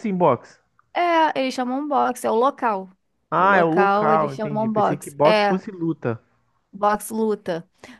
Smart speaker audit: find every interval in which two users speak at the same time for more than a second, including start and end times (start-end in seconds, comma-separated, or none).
3.4-5.6